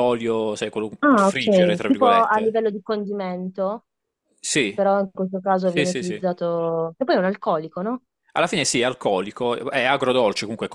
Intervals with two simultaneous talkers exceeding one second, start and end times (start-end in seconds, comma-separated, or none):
1.0-2.6